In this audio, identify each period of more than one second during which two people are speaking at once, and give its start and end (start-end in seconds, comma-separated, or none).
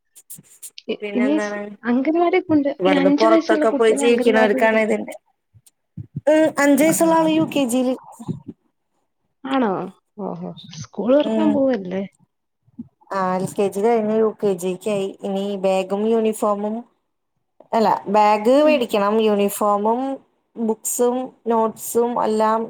2.8-4.6